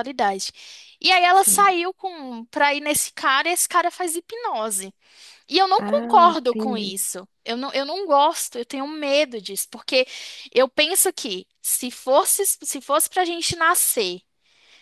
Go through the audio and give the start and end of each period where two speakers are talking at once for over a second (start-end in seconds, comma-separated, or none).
5.8-7.0